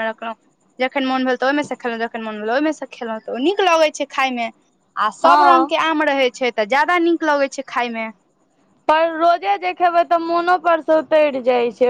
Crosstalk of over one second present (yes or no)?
no